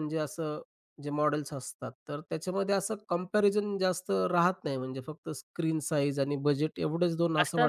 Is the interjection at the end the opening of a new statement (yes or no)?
yes